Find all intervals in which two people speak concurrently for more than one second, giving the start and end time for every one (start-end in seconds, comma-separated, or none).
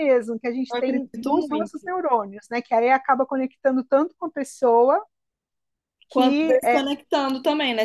0.7-1.9